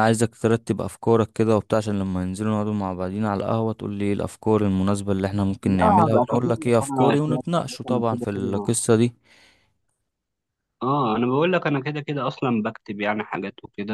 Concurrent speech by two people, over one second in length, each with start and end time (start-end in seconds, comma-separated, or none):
5.6-8.7